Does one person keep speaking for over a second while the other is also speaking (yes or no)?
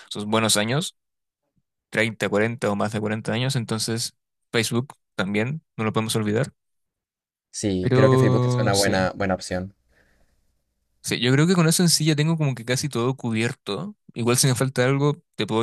yes